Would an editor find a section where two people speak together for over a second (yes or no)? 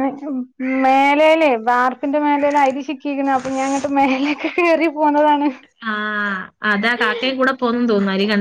no